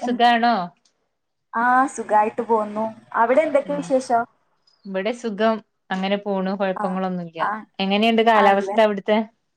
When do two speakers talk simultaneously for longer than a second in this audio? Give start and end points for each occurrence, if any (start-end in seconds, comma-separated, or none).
none